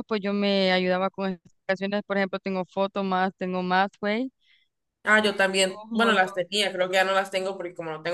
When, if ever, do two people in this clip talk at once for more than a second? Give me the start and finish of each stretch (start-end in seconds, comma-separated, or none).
none